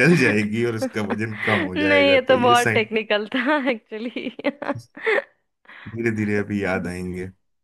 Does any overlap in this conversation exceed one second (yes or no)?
yes